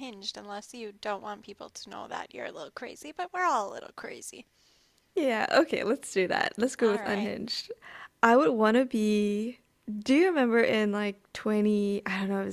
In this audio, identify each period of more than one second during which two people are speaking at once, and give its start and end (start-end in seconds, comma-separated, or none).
none